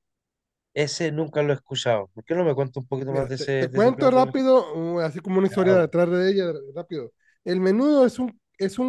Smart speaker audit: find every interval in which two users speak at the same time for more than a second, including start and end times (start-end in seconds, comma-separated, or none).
3.0-4.4